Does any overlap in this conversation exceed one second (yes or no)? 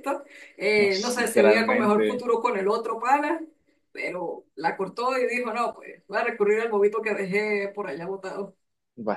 yes